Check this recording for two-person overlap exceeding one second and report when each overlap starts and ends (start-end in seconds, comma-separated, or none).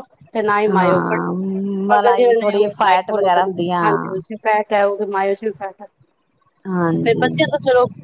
1.9-4.1